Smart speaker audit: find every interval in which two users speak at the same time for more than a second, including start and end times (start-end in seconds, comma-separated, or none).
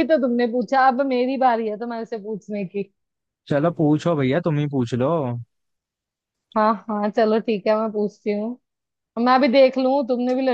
none